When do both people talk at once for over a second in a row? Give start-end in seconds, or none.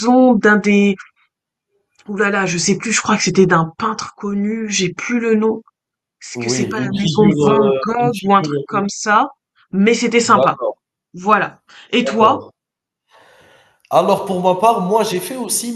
6.3-8.6